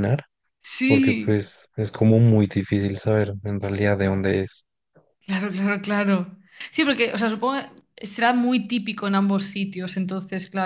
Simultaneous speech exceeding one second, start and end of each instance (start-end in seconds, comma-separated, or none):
none